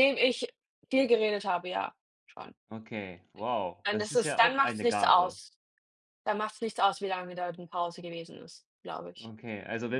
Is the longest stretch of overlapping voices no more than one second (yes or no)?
no